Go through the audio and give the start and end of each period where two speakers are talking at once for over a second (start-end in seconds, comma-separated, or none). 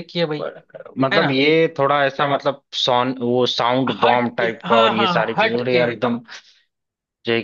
4.0-5.8